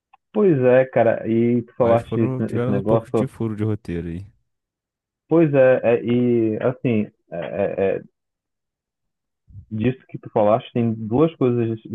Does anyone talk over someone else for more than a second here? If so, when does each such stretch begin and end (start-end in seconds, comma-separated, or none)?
1.8-3.3